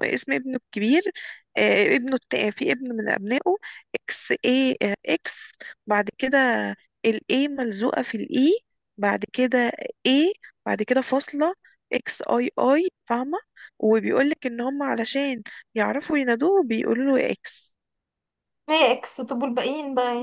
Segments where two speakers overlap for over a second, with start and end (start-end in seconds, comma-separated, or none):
none